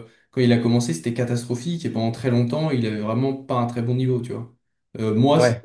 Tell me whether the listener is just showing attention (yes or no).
yes